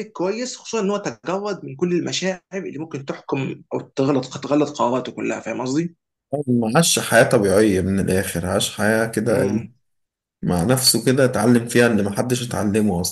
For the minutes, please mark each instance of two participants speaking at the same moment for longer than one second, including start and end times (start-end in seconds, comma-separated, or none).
none